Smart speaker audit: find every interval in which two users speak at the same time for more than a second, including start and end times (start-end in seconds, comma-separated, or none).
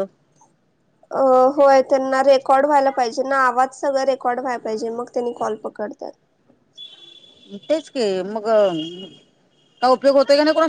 none